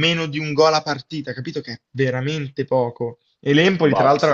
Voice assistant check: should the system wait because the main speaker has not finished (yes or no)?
yes